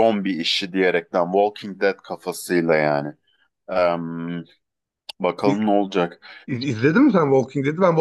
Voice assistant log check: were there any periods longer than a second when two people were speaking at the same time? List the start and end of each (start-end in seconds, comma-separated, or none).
none